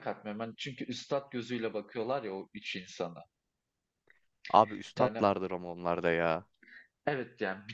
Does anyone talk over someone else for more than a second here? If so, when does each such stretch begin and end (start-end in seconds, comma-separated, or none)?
none